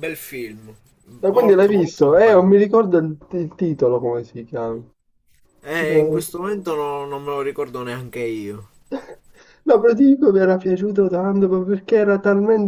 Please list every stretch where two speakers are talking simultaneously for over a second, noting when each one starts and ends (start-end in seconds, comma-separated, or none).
1.3-2.5